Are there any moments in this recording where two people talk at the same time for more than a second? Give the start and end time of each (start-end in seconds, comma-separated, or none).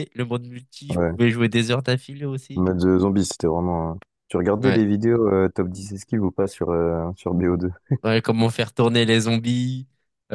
none